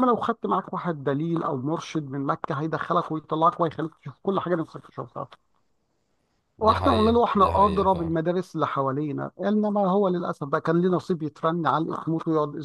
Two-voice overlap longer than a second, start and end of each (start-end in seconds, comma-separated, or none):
6.6-8.2